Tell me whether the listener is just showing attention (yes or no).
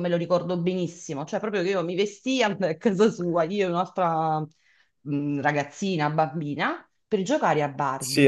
no